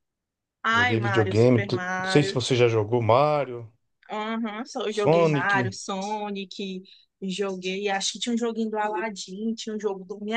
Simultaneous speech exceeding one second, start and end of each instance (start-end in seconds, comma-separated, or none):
0.7-2.3